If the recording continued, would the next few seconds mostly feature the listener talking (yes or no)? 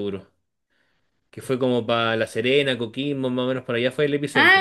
yes